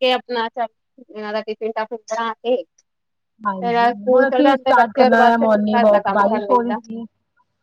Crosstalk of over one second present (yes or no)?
yes